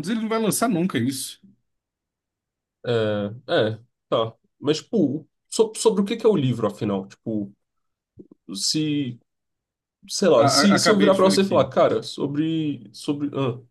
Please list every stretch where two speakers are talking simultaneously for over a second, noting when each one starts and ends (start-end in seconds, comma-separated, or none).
10.4-11.7